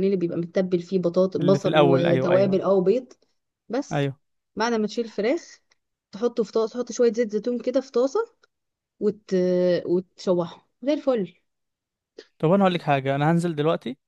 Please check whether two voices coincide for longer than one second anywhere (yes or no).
yes